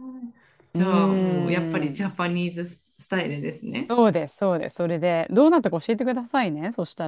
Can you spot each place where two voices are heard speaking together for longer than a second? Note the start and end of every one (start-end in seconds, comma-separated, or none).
none